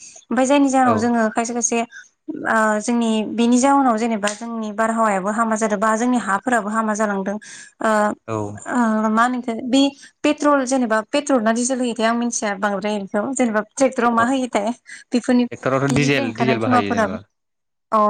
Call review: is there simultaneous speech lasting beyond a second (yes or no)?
yes